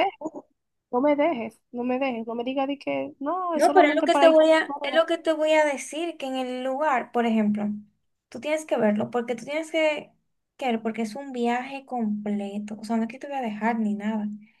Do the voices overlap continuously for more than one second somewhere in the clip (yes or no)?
yes